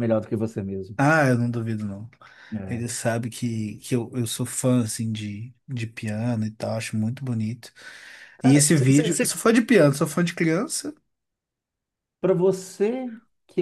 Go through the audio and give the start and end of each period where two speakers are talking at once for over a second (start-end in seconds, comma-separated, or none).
none